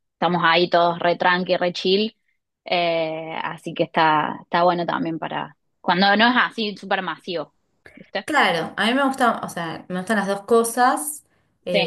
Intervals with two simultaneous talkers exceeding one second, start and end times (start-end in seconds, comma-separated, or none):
none